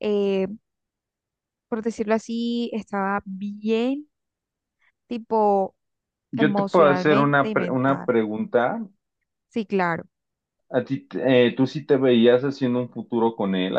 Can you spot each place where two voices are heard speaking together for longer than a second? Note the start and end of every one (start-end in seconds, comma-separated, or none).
6.4-8.1